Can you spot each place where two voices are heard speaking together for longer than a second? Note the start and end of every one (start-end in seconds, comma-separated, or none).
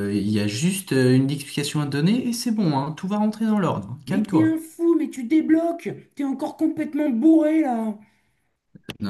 none